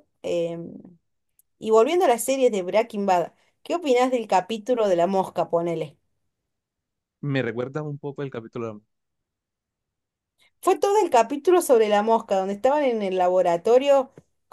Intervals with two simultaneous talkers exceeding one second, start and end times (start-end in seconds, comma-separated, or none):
none